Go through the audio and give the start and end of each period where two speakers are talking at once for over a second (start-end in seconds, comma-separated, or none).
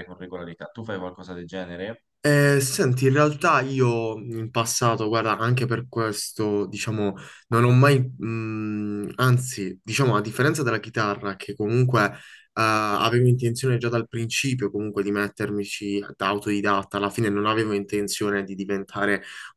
none